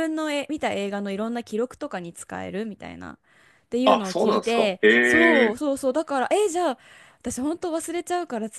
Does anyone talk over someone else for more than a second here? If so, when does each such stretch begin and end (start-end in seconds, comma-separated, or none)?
3.8-5.6